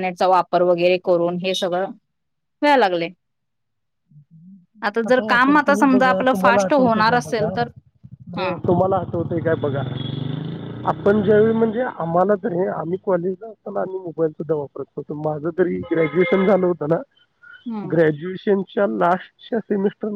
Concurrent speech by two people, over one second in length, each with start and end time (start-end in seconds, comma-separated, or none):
5.6-7.5